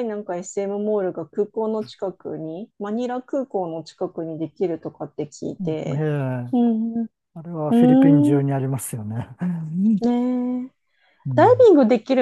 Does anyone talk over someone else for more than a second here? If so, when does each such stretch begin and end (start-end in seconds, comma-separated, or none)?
none